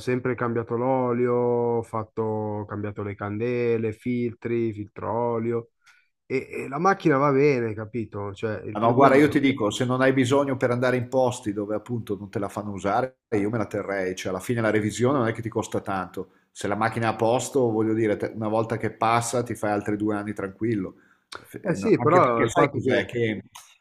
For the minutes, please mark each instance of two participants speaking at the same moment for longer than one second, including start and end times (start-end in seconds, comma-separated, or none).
21.6-23.1